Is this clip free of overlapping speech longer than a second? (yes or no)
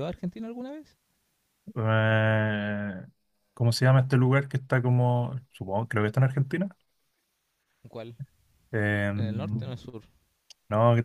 yes